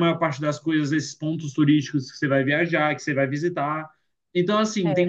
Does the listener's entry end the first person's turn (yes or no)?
no